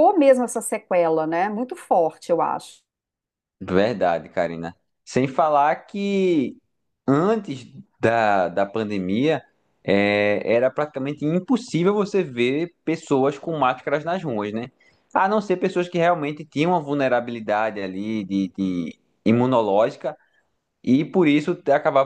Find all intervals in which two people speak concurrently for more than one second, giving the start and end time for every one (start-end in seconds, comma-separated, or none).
none